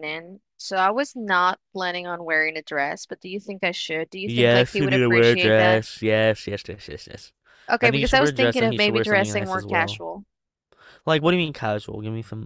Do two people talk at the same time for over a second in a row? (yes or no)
yes